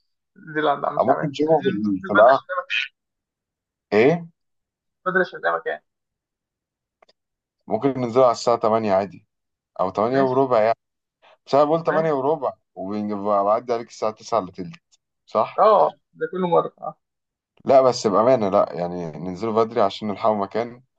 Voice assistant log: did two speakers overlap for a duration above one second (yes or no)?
yes